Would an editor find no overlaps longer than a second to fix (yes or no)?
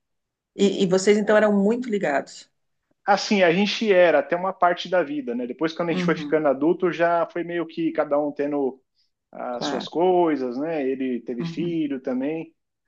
yes